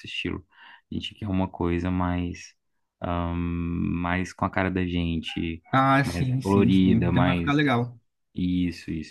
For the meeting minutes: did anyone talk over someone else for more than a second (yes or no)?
yes